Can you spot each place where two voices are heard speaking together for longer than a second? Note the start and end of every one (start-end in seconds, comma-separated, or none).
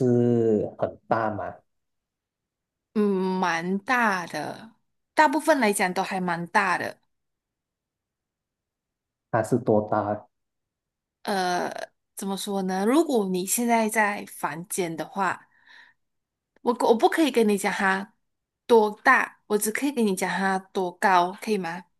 none